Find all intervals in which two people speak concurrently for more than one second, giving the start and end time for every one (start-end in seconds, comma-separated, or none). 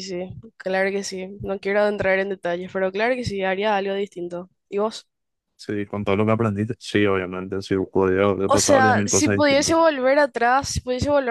8.5-9.8